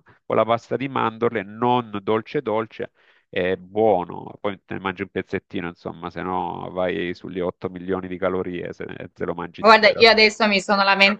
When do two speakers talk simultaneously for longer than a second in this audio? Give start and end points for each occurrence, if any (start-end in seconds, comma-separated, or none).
none